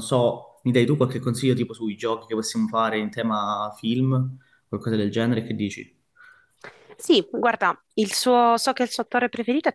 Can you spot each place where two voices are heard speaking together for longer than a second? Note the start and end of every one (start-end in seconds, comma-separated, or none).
none